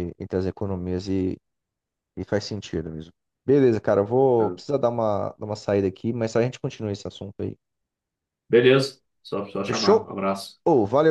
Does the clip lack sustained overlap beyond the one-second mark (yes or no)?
yes